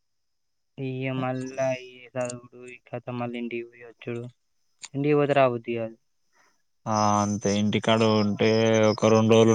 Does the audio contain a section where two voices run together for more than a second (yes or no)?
no